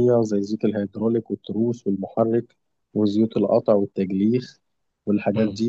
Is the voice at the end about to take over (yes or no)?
no